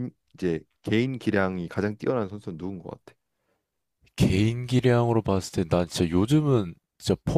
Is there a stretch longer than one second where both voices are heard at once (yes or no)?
no